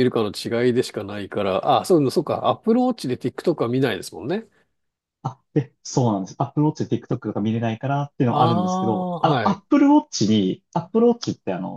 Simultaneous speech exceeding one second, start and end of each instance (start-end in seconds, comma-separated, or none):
8.3-9.6